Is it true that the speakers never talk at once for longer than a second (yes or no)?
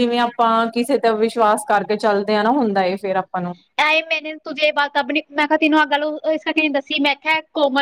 yes